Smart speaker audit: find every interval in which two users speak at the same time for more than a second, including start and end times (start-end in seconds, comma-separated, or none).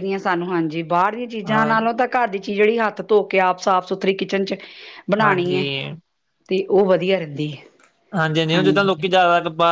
none